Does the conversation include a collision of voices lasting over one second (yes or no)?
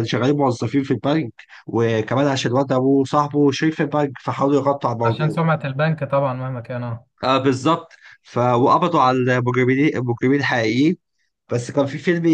no